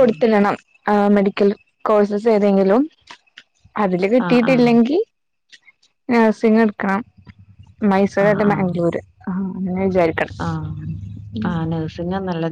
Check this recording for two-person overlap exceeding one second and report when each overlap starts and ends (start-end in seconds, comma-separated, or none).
none